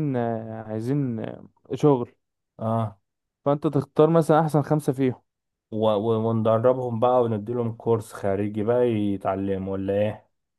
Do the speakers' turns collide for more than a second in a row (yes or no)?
no